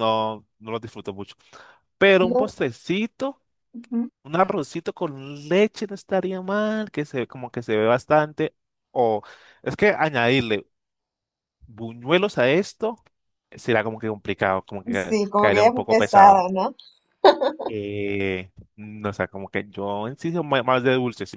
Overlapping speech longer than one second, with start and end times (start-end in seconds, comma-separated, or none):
15.0-16.5